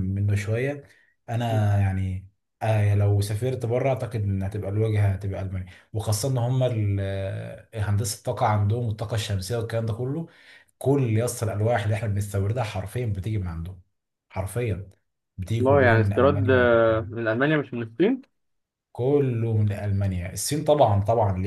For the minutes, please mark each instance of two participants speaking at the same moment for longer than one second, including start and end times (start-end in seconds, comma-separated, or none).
15.6-17.1